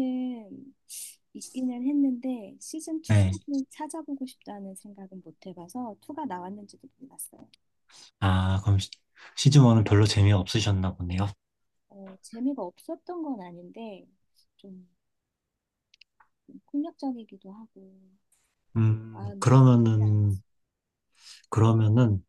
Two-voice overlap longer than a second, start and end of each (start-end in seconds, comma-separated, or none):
19.1-20.4